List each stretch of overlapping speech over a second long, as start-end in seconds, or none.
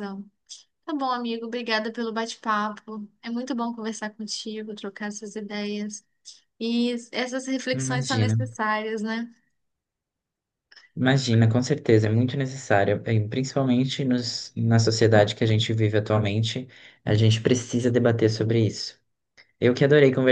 none